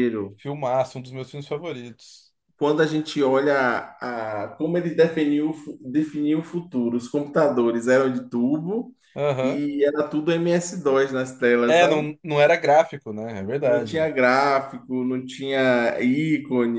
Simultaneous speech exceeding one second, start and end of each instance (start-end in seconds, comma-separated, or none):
none